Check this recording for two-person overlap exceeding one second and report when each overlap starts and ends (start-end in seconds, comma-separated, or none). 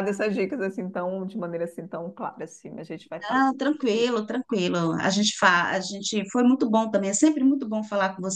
none